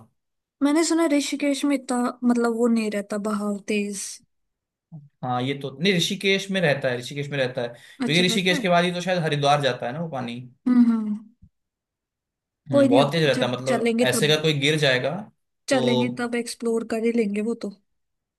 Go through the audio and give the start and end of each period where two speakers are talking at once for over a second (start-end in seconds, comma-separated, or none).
12.7-14.4